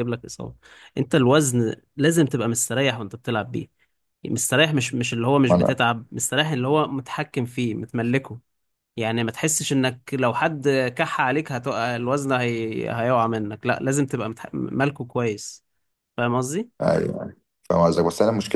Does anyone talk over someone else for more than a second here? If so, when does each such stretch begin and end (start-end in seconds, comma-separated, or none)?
none